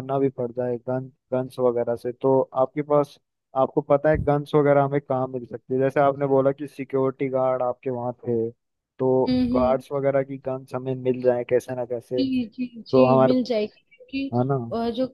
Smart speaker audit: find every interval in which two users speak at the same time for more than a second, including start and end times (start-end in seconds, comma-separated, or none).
none